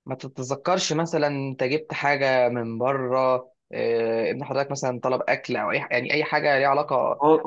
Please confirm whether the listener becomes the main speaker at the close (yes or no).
yes